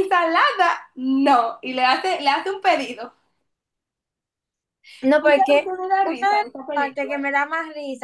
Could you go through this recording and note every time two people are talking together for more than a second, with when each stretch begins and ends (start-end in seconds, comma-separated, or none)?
5.2-7.1